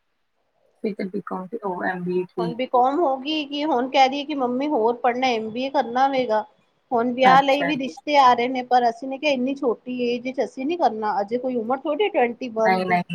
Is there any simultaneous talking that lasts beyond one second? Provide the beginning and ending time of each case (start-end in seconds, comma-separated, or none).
none